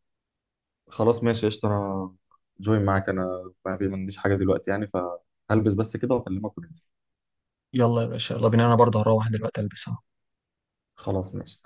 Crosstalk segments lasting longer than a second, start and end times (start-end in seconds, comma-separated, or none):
none